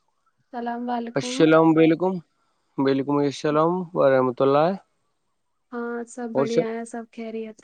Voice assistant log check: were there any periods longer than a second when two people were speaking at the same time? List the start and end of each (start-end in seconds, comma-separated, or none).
none